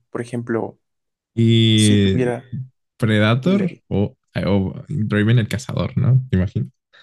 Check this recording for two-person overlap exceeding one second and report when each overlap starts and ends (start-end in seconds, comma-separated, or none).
none